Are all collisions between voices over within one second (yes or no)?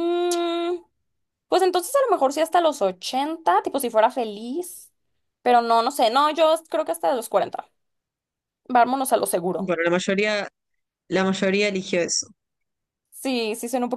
yes